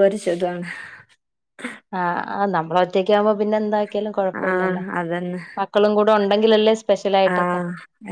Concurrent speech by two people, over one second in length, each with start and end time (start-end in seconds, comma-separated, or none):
none